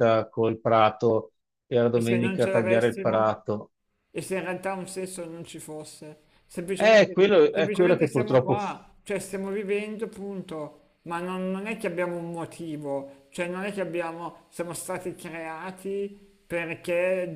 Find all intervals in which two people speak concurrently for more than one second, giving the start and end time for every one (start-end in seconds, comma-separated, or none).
1.9-3.3, 6.8-8.6